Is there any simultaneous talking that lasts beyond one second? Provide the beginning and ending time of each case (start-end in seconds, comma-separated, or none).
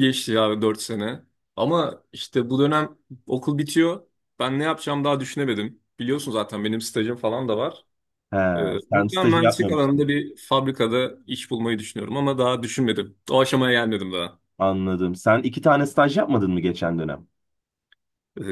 8.8-10.1